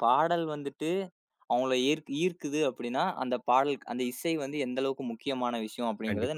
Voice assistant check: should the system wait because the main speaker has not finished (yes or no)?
no